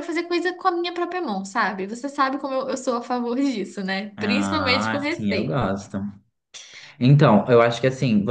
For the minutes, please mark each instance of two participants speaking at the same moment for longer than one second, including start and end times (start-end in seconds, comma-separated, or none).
4.2-5.7